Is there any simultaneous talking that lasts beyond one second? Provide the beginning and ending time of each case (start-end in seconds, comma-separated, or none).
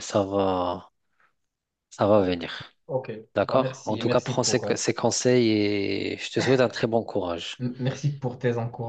3.3-4.8